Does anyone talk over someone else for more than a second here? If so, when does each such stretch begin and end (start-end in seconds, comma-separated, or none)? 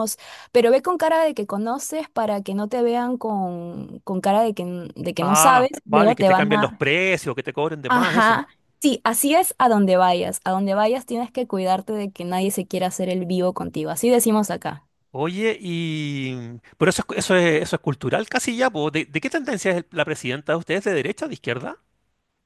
5.2-6.8